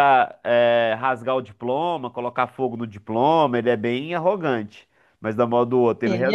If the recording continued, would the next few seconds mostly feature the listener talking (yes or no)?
no